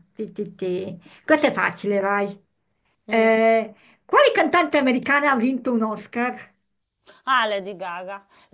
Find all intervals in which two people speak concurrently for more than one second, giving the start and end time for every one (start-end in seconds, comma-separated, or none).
none